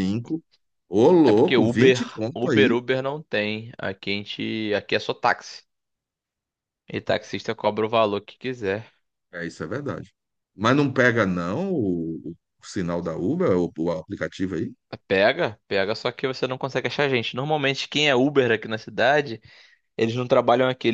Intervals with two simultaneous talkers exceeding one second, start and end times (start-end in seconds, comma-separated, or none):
1.2-2.8